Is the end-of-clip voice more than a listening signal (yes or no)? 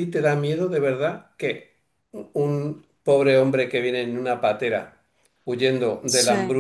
no